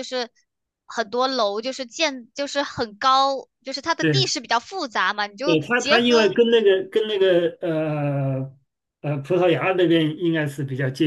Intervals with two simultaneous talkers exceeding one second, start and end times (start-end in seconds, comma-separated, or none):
5.4-6.8